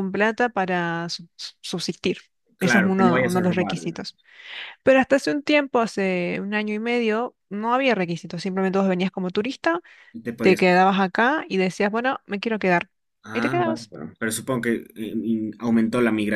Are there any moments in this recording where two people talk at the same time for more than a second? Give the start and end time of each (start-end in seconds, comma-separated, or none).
2.6-4.2